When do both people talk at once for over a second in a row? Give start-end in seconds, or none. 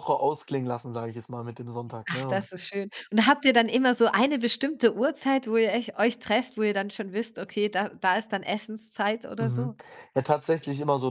none